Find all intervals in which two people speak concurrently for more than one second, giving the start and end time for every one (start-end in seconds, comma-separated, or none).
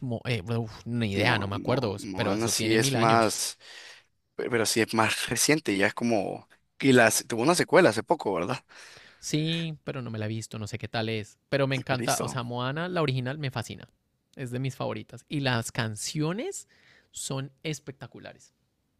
1.1-3.4